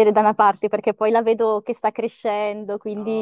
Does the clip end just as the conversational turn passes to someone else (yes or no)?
yes